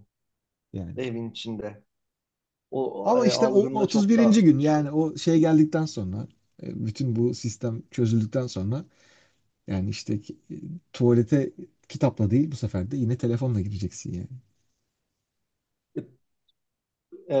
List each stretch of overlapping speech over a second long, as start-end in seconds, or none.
3.0-4.9